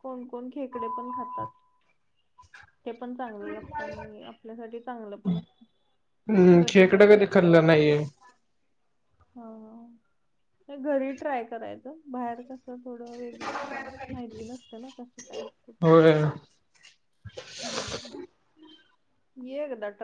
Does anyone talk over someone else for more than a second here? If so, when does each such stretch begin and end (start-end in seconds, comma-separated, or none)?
6.6-7.9